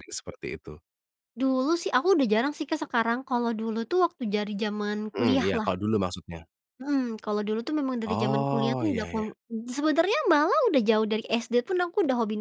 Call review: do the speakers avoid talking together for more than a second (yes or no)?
no